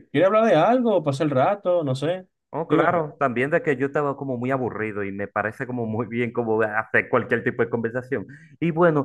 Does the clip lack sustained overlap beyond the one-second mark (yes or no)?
yes